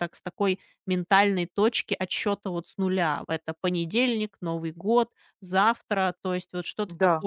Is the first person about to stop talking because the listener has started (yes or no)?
no